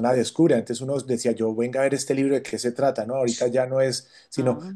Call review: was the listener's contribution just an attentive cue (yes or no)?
yes